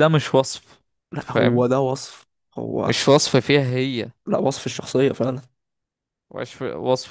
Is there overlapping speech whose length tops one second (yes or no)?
no